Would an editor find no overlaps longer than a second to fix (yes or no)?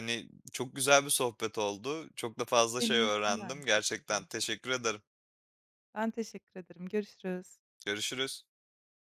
no